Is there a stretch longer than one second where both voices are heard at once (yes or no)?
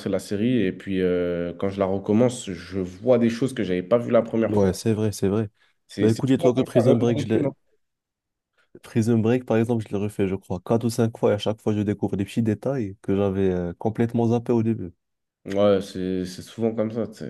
yes